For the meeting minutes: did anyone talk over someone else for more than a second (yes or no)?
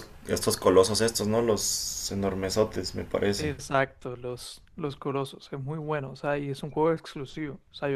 no